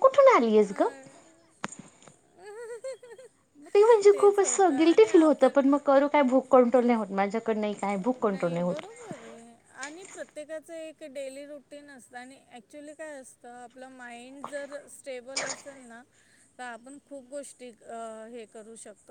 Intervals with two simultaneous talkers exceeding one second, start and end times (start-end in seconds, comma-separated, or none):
4.1-5.7